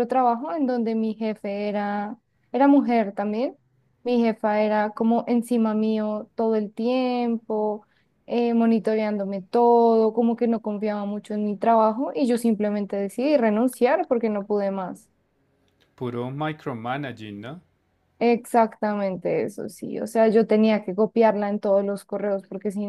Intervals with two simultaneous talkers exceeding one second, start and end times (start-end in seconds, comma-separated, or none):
none